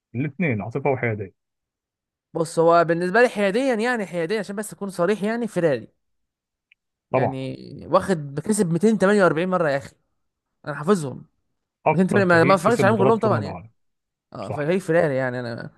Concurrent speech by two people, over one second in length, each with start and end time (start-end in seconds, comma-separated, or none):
11.9-13.6